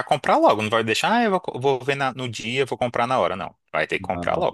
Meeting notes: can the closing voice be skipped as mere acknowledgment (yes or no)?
no